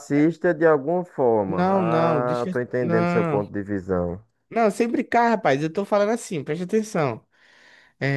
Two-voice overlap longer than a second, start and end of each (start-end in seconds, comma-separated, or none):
1.4-3.5